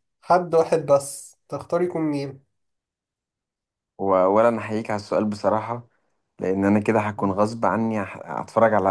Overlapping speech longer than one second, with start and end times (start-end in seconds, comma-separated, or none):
none